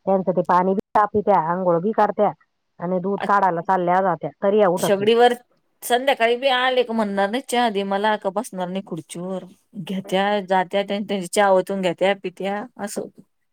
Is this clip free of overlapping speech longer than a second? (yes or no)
yes